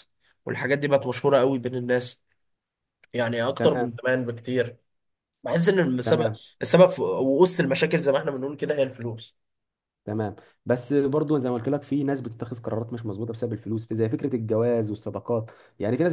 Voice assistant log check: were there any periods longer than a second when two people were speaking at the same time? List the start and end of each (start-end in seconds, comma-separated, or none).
none